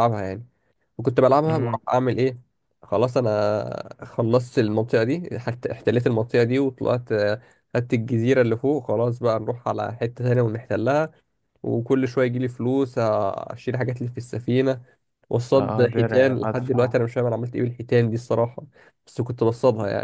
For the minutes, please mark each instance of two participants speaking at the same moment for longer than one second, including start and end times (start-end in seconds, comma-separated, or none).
15.5-16.9